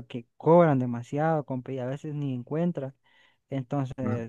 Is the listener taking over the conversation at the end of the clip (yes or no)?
no